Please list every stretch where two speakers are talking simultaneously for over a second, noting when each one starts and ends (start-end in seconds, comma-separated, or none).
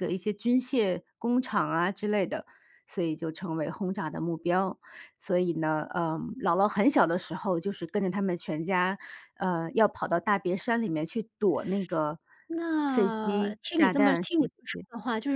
12.9-14.8